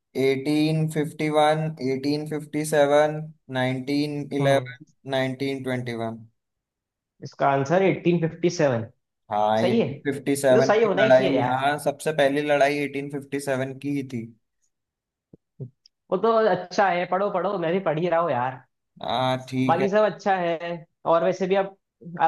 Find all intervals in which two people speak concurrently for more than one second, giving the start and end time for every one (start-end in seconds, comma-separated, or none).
9.6-11.6